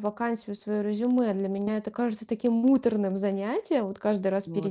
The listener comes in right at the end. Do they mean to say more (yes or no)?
no